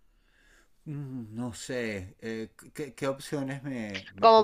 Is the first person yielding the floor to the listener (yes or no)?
yes